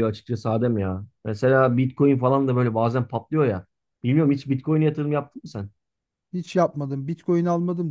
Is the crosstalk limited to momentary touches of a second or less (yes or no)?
yes